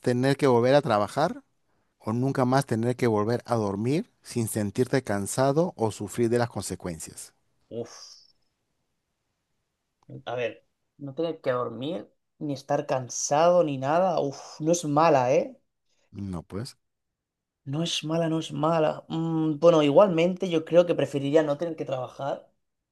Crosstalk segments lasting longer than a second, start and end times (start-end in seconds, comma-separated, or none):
none